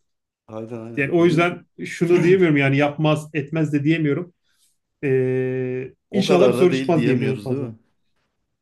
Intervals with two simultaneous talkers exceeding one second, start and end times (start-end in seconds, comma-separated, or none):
6.1-7.7